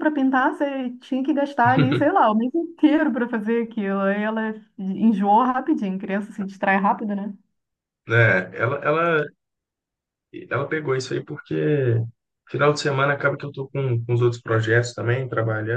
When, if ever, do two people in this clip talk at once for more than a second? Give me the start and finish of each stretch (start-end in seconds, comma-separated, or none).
none